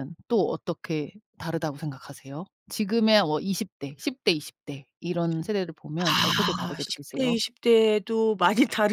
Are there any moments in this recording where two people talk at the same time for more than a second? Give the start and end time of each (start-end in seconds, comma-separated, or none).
6.0-7.4